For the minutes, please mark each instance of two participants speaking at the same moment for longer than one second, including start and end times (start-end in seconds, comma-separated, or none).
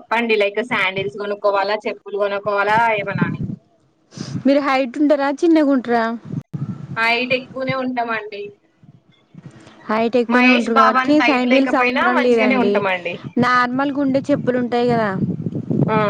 11.0-12.7